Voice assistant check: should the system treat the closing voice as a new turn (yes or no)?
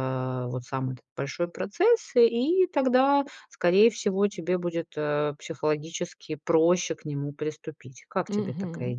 yes